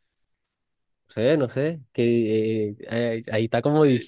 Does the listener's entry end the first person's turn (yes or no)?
yes